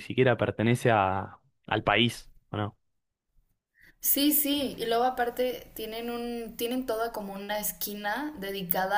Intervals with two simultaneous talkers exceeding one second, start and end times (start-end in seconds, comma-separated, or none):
none